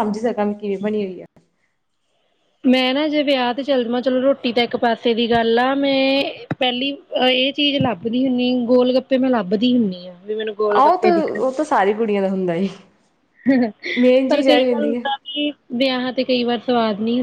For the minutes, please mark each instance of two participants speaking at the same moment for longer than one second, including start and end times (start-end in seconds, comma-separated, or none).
none